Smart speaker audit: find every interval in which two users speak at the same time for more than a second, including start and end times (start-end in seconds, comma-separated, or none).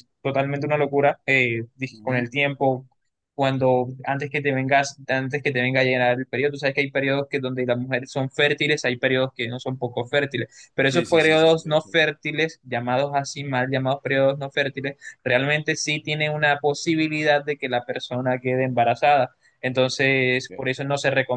10.8-12.1